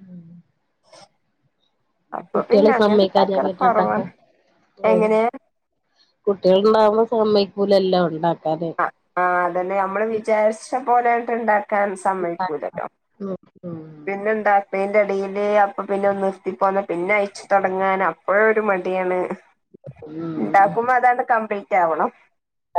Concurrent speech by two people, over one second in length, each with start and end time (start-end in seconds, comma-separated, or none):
2.3-4.0